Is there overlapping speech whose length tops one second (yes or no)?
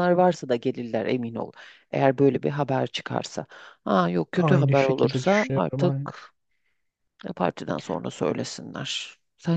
yes